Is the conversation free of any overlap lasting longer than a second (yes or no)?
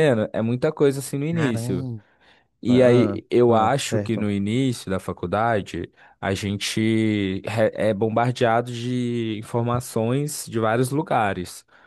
no